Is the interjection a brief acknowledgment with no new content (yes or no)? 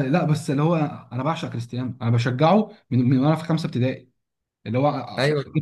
yes